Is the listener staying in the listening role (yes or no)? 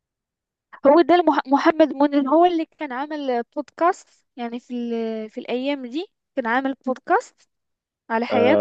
no